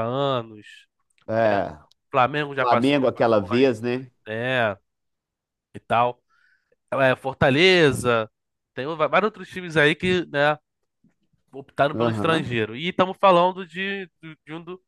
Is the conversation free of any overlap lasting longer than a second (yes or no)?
no